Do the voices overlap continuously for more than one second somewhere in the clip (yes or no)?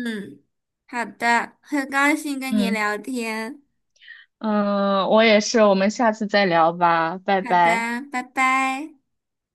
no